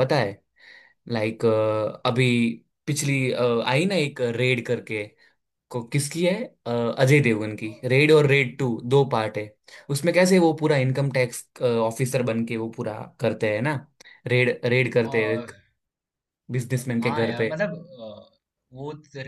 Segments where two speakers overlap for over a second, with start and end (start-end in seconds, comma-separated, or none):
none